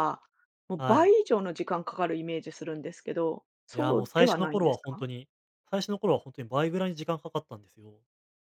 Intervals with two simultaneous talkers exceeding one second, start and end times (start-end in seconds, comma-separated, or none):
3.7-5.0